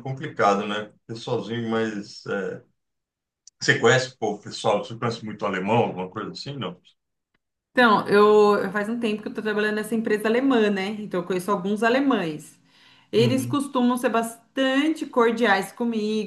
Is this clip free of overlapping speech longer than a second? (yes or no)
yes